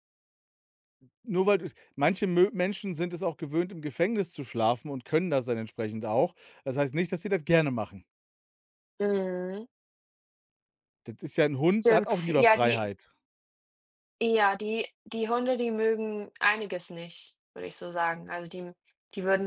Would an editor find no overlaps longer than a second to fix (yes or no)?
no